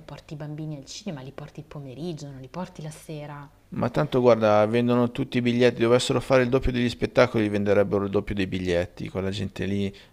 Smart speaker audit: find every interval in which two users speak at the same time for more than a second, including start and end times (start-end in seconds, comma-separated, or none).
none